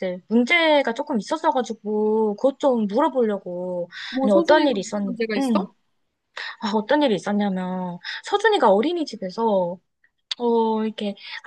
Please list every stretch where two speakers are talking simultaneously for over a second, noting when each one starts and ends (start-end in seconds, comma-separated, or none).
4.1-5.7